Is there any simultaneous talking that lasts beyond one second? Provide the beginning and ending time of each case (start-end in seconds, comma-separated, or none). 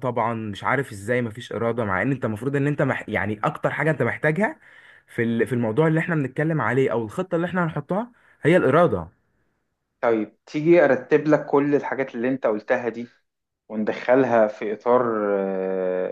none